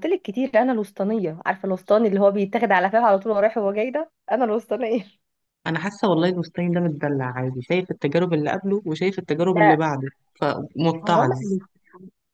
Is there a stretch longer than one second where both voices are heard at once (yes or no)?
no